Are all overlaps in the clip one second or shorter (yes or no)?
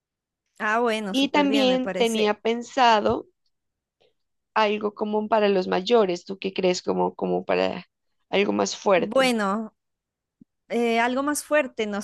no